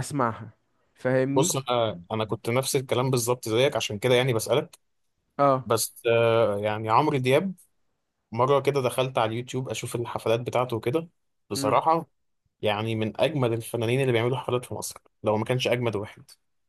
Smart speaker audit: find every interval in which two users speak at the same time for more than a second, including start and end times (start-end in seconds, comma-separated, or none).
none